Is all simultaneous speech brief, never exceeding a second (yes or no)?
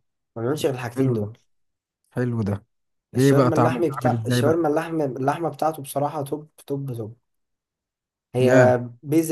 no